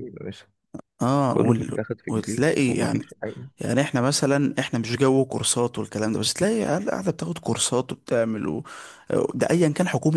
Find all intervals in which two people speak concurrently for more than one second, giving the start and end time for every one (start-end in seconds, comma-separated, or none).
1.3-3.0